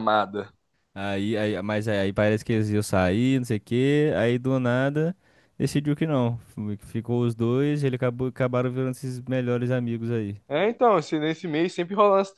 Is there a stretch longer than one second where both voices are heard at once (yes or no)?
no